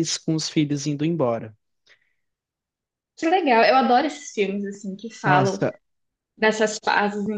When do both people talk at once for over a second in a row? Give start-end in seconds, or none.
none